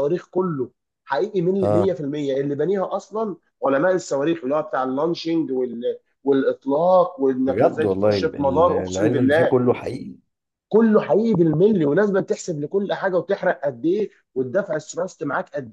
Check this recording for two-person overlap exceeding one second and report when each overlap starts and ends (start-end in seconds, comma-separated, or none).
7.5-9.5